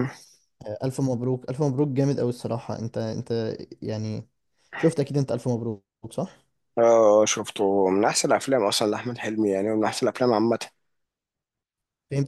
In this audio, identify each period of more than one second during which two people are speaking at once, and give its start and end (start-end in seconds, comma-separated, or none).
none